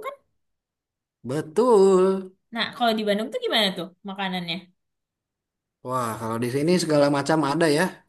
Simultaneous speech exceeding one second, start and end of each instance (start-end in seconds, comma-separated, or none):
none